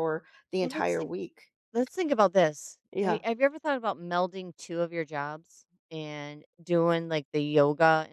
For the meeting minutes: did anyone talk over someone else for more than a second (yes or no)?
no